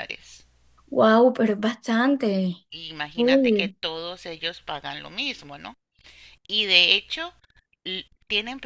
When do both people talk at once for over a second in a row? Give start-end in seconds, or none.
none